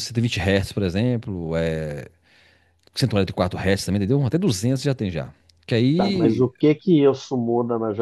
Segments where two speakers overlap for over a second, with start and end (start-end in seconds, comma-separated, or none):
none